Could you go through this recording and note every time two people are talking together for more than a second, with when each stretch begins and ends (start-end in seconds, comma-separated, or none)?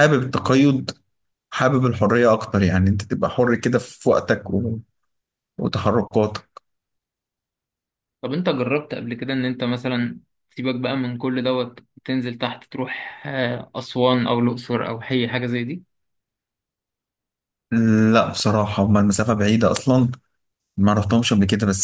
none